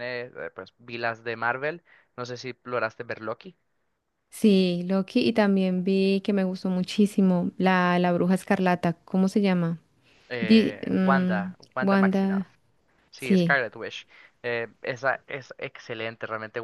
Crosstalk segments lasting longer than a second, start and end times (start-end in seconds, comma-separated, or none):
10.4-12.5